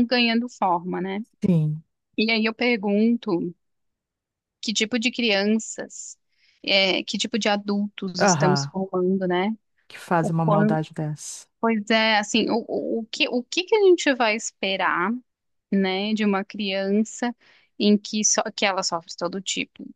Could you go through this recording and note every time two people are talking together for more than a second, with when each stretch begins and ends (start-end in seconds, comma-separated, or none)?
none